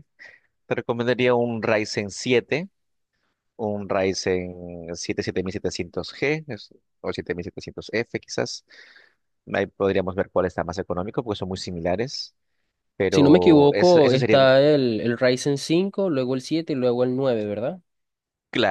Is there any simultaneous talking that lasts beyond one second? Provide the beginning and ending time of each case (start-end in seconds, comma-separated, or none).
13.1-14.4